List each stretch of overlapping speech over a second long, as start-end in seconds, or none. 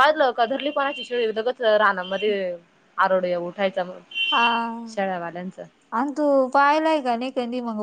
none